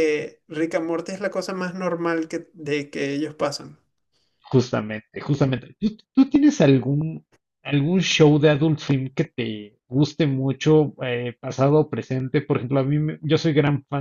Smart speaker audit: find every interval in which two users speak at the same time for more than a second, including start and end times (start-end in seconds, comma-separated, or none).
none